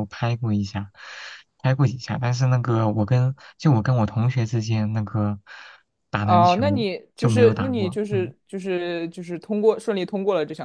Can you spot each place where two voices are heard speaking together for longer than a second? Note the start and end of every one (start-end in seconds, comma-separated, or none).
6.2-8.3